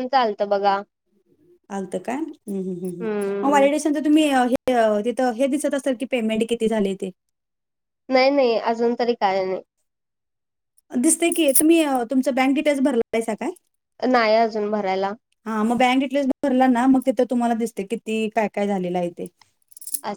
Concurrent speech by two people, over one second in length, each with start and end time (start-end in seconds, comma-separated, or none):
none